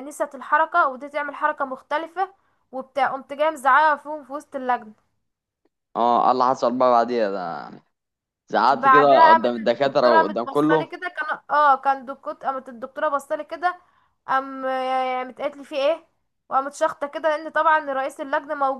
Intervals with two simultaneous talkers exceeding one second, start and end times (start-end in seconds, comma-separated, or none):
8.7-11.0